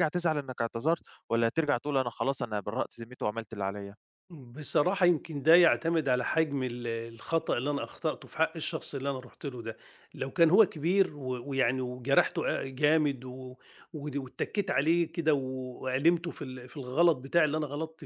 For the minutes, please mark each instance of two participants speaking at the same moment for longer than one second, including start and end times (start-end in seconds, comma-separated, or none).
none